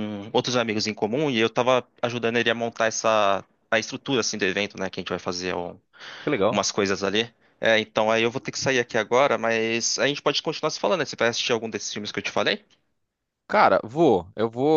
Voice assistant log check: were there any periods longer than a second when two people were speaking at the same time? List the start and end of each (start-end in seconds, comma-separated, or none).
none